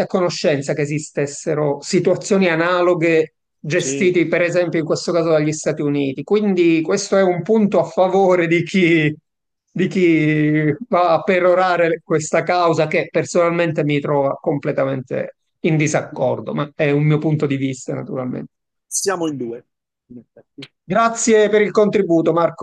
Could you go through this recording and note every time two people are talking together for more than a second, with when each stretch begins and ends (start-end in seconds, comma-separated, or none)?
none